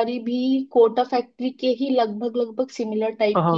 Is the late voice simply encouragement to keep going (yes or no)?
no